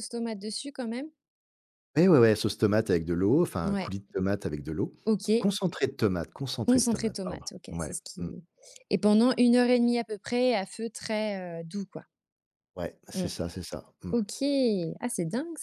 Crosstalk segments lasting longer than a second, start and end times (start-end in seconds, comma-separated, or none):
6.7-8.3